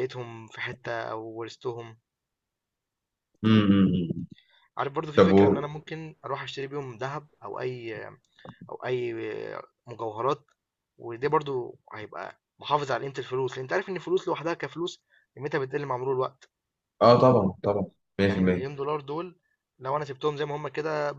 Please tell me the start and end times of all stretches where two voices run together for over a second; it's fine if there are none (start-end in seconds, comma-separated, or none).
none